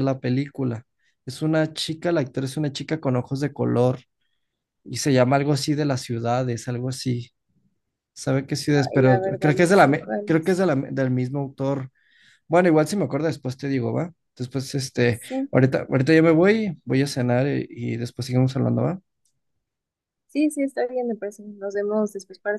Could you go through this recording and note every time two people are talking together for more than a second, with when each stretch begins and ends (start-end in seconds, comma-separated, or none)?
8.7-10.6